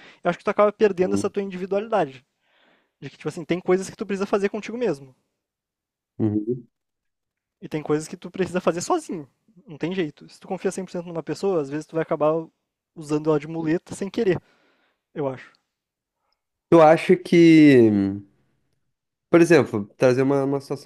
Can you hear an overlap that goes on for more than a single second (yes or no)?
no